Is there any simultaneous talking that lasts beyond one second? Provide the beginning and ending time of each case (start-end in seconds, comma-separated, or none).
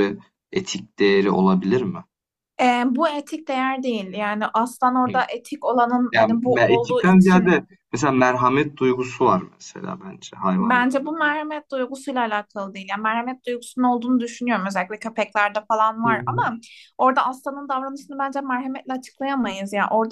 6.1-7.5